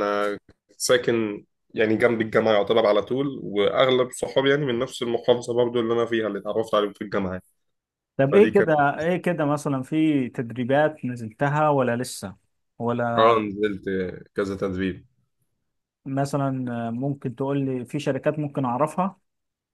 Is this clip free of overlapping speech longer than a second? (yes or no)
yes